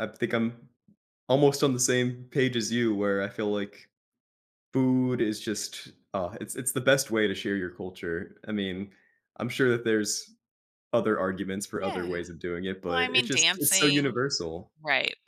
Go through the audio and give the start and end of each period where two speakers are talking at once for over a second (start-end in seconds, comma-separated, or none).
12.8-14.2